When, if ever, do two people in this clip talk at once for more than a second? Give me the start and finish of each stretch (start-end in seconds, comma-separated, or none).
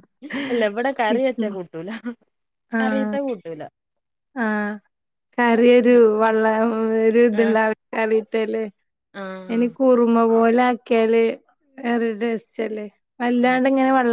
none